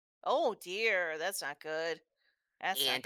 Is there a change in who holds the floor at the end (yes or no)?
yes